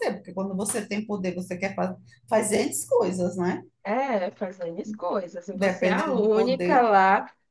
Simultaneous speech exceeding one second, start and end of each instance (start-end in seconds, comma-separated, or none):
5.5-6.9